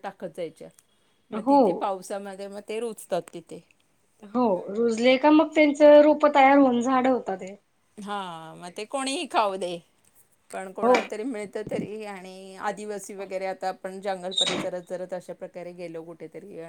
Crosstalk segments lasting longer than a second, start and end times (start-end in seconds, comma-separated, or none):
none